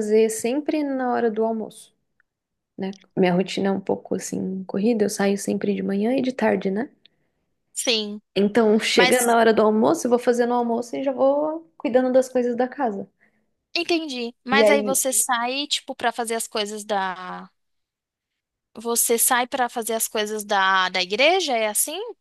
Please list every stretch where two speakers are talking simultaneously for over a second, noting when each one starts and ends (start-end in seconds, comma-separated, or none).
none